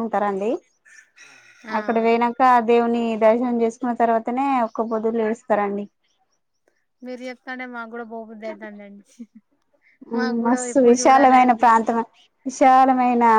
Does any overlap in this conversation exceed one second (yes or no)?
yes